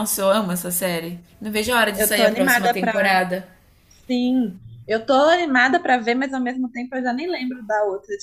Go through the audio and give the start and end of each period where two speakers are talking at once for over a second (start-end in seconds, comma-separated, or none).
1.9-3.2